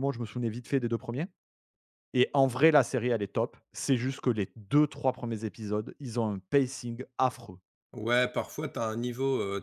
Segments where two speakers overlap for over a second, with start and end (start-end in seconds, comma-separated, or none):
none